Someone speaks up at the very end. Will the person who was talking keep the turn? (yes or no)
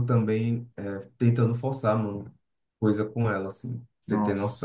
yes